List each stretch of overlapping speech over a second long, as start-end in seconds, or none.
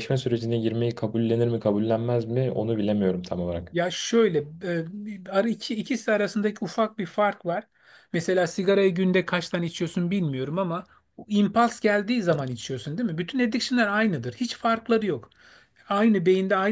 none